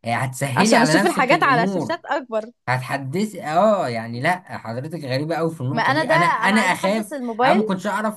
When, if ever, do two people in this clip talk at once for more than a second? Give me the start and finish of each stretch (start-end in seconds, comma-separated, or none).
0.6-2.0, 5.7-7.6